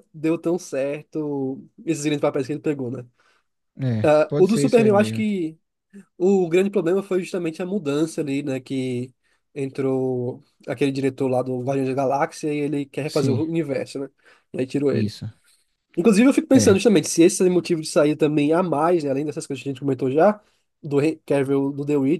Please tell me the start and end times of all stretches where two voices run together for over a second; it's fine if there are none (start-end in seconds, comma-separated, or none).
4.0-5.3